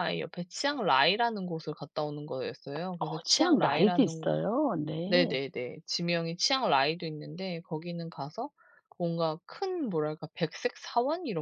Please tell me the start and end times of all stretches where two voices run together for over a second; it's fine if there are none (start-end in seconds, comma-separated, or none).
3.0-4.3